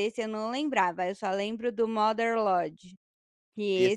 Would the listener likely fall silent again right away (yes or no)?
yes